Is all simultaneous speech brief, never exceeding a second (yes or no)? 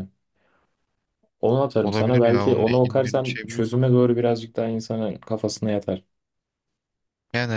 no